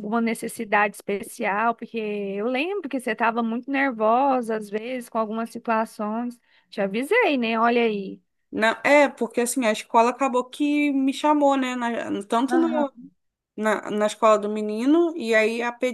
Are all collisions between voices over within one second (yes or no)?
yes